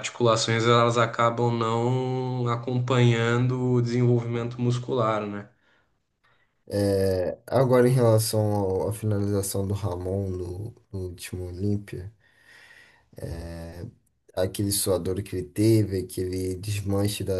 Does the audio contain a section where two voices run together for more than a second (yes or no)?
no